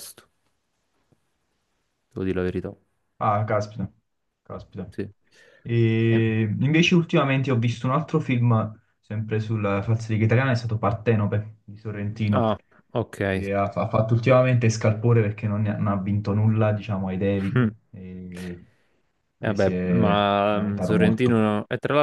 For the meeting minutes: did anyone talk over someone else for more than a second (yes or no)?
yes